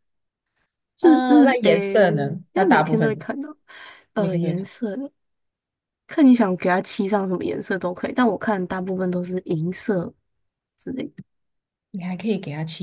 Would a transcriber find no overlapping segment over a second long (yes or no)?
no